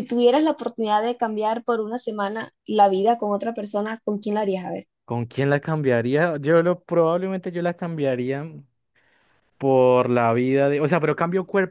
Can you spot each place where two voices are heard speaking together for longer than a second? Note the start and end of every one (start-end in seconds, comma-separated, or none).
none